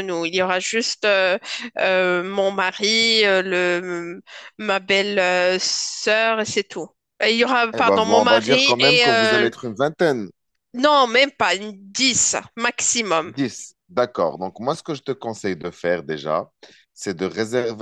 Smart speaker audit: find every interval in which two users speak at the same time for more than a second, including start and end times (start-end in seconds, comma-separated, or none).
7.7-9.5